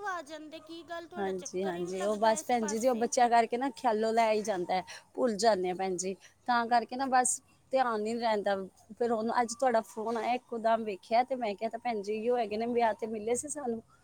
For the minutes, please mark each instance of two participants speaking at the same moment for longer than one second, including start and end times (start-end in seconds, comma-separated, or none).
1.2-3.1